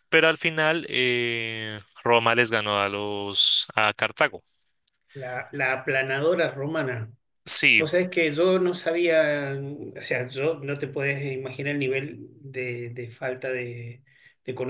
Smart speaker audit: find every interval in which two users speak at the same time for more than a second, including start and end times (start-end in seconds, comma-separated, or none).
none